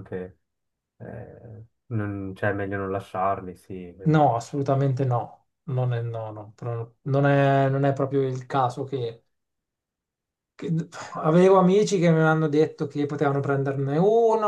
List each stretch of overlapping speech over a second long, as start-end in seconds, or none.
none